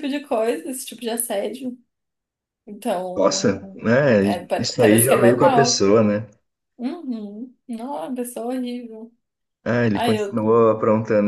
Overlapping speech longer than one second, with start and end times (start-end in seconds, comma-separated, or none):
4.2-5.8